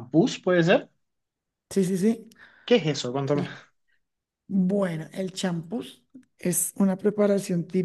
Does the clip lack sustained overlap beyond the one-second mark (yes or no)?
yes